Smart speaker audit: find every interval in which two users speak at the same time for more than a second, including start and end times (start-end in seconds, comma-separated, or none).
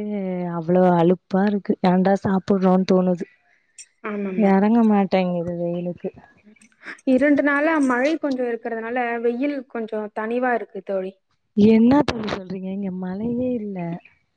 none